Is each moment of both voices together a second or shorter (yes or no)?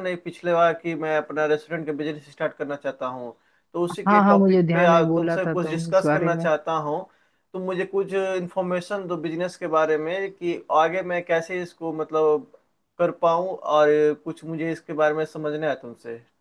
no